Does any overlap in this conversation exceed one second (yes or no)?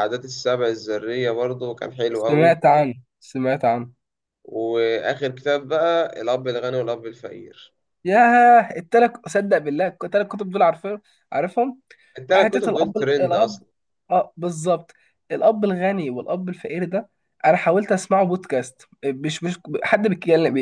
yes